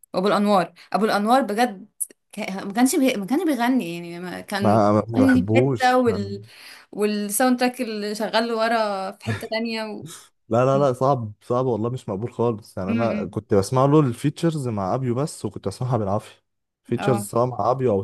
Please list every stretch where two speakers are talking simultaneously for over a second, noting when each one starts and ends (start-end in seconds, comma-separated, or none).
4.6-6.4